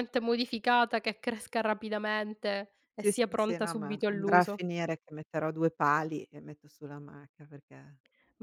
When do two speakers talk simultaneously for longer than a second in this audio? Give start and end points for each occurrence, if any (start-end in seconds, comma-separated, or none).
3.0-4.6